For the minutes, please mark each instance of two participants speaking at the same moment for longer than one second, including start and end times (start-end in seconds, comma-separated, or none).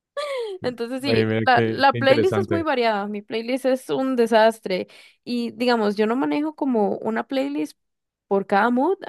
1.0-2.6